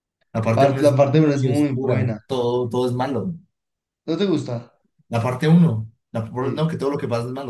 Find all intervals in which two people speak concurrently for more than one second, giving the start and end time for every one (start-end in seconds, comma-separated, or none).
0.5-2.2